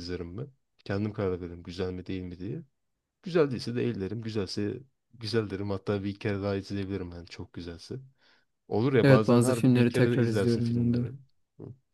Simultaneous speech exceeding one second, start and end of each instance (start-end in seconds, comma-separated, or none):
9.0-11.1